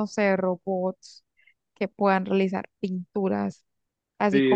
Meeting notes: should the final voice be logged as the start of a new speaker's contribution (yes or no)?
yes